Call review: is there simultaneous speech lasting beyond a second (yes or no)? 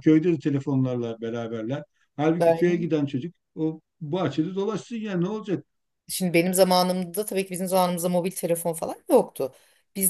no